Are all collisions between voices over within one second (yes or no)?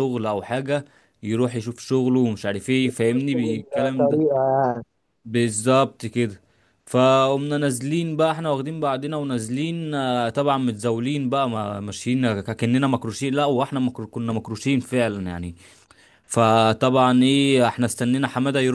no